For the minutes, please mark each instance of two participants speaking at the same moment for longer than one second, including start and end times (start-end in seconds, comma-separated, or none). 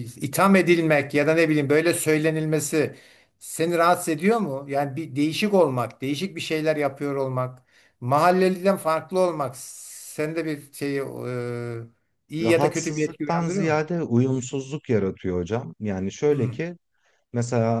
12.4-13.8